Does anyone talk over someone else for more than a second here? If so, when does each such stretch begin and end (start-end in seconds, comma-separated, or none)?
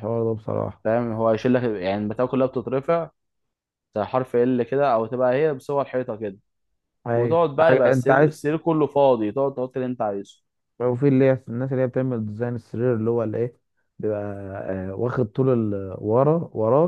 7.1-8.4